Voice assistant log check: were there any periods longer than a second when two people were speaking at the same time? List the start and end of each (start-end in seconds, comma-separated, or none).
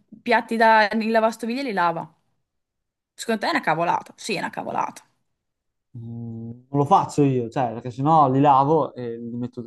none